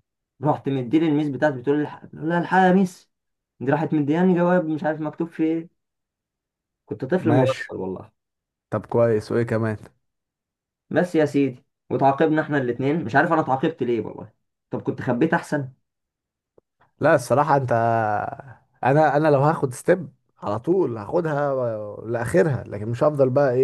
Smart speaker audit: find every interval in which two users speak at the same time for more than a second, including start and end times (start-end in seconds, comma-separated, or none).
none